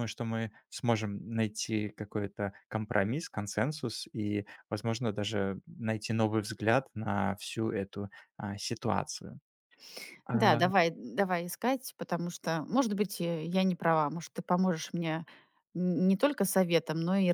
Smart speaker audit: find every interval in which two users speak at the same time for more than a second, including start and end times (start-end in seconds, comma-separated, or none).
none